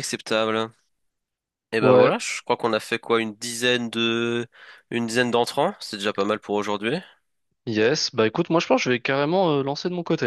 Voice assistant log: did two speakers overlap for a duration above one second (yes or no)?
no